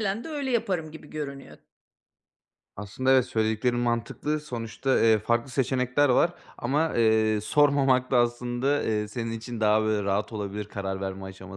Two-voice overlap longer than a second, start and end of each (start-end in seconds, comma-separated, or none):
none